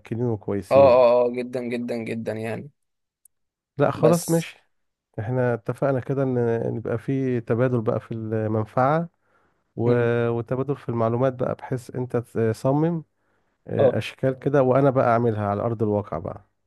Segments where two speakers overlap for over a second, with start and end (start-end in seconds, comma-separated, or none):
none